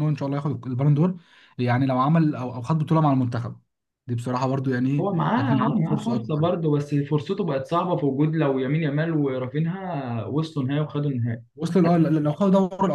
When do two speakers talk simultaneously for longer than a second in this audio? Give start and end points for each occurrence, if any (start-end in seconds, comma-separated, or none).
5.0-6.6